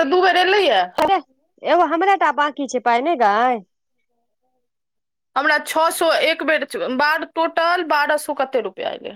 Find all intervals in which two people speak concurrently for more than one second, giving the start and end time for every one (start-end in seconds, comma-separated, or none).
none